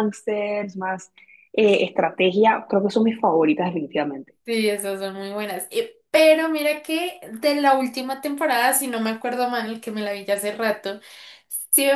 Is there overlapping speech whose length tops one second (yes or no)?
no